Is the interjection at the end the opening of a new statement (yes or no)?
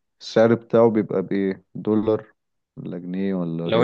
yes